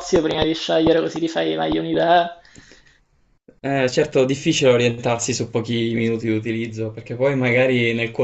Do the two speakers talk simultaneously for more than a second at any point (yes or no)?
no